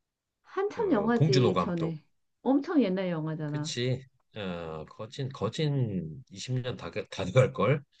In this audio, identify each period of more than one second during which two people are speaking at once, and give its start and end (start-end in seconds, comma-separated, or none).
0.7-1.9